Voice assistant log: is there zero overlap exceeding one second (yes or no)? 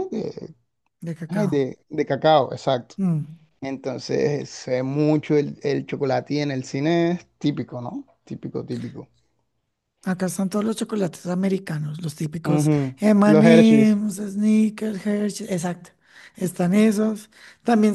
no